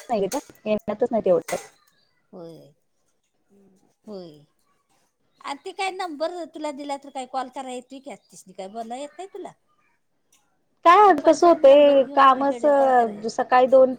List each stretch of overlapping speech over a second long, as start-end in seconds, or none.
11.1-12.6